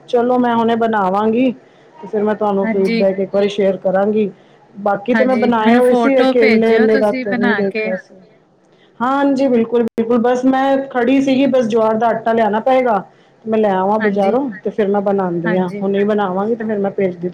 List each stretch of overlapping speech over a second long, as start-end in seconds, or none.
5.1-7.8